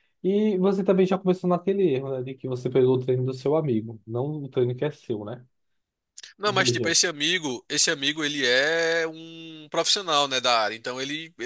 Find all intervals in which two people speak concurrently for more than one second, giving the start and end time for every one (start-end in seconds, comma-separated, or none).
none